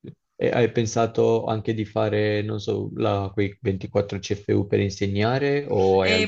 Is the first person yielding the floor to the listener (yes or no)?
yes